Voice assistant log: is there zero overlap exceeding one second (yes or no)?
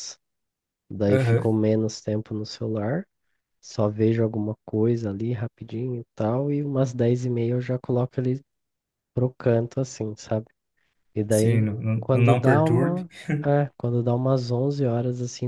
no